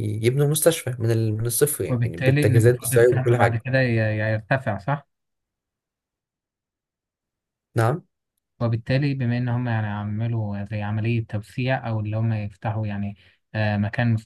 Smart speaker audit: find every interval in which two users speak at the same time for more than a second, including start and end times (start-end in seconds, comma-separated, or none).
1.9-3.6